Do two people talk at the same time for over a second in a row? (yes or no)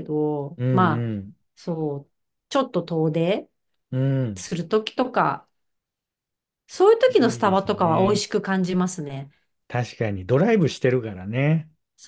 yes